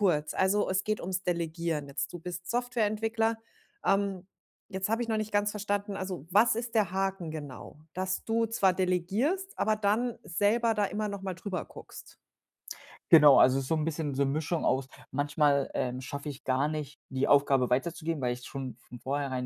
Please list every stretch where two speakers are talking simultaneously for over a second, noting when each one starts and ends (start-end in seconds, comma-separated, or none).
none